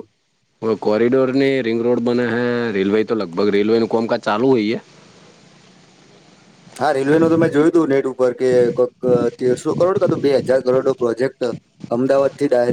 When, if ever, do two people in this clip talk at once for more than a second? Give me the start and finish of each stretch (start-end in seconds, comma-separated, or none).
none